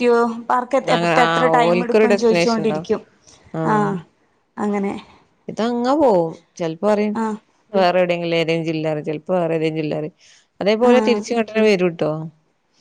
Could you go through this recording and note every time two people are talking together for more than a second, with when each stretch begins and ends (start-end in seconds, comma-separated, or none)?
0.9-2.9